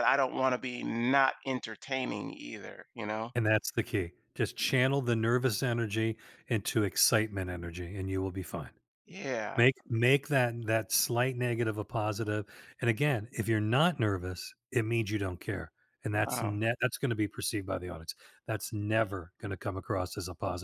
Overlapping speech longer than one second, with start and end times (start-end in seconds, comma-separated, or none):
none